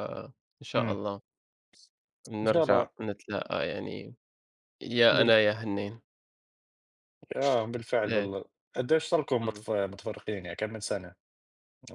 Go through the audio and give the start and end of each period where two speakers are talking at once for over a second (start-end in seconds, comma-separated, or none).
none